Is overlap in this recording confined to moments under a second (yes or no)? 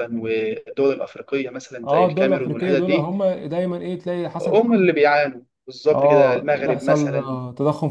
no